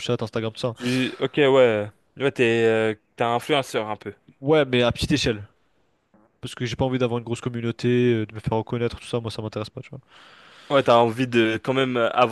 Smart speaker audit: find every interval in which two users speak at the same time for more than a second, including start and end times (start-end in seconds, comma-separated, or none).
none